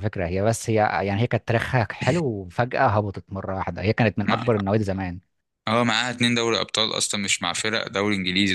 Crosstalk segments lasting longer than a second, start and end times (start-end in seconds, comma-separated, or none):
none